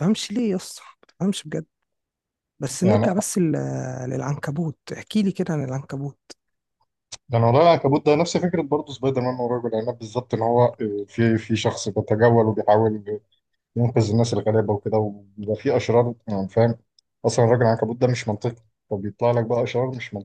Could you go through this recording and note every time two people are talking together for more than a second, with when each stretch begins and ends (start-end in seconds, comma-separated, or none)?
none